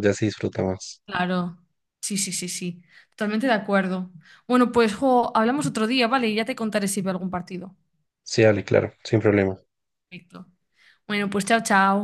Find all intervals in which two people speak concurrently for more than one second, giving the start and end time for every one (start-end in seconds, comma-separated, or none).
none